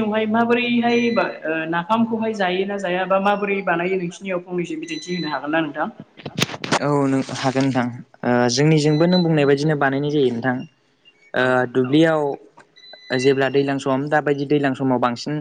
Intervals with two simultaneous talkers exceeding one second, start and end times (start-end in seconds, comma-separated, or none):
none